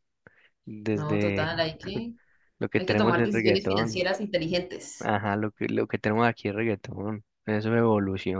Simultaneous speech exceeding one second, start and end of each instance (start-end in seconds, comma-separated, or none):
2.8-4.0